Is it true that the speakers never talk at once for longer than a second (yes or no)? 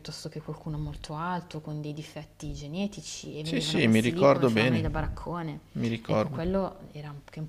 no